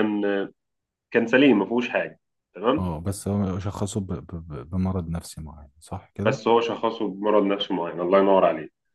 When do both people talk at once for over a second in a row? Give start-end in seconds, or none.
none